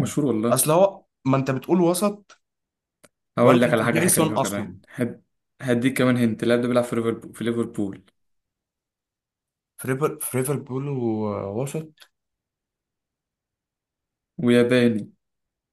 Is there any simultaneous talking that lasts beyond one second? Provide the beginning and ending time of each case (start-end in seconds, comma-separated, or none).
3.4-4.8